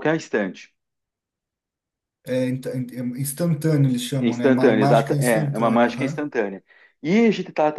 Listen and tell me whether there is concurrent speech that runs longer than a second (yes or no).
yes